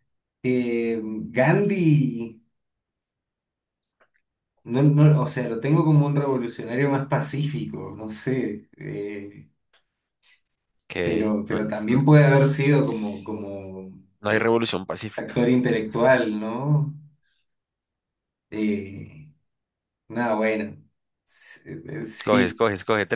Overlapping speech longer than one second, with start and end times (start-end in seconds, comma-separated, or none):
none